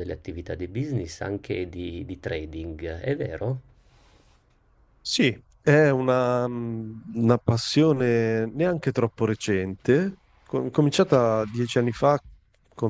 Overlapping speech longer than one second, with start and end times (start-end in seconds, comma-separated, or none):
none